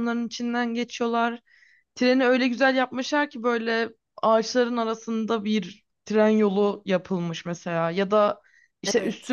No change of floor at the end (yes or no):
yes